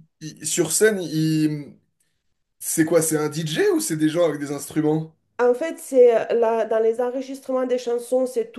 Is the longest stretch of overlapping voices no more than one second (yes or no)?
yes